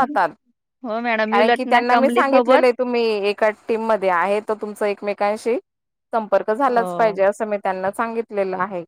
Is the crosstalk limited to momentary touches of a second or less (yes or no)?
no